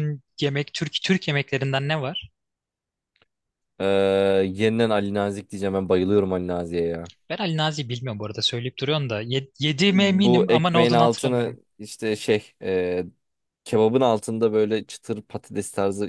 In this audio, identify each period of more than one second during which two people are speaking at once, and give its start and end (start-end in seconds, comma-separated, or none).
9.9-11.6